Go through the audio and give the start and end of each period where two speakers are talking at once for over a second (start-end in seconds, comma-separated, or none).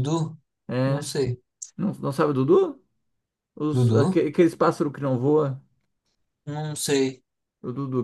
none